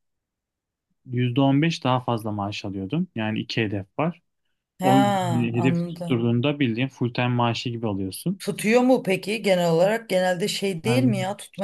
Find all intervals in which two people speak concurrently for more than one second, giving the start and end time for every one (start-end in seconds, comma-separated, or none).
4.8-6.3